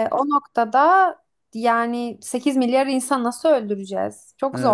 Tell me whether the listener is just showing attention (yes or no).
no